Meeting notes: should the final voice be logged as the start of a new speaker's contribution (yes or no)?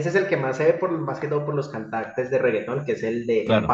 no